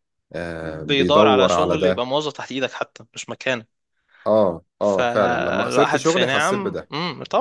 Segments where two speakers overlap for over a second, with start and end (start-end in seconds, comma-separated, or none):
0.6-2.0, 4.8-6.9